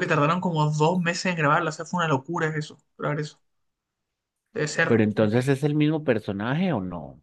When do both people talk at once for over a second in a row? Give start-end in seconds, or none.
none